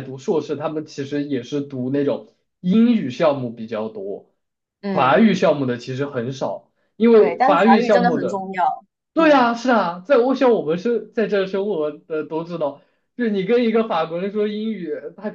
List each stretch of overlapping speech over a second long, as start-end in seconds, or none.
7.1-8.4